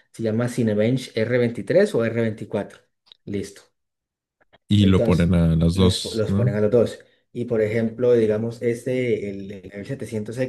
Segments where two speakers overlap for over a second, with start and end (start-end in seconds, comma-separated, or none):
4.8-6.6